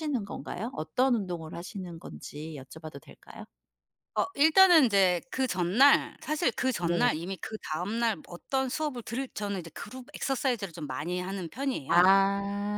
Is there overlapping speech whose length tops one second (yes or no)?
no